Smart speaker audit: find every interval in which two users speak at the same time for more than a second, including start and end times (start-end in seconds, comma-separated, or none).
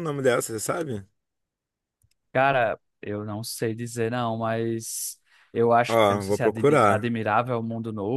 5.9-7.1